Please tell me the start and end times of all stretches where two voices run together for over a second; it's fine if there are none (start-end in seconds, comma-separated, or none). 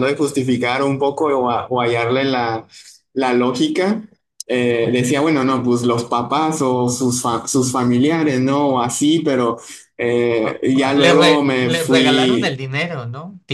10.4-12.6